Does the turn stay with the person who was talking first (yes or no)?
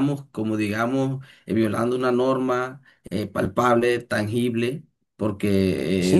no